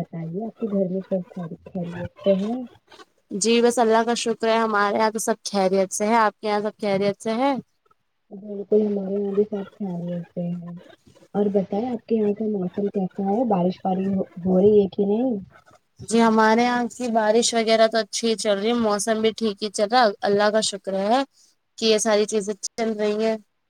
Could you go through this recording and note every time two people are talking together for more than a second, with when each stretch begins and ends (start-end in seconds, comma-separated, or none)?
none